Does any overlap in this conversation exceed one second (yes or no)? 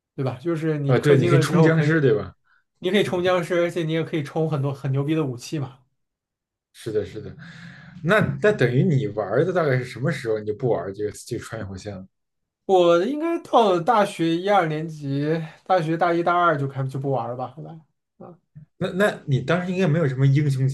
yes